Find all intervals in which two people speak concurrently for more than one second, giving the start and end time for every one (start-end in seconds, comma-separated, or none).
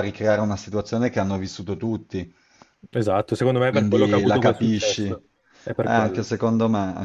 3.6-5.2